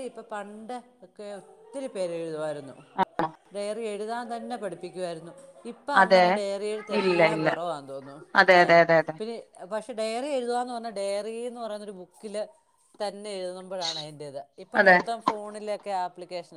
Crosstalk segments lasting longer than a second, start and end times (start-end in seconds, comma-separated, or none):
none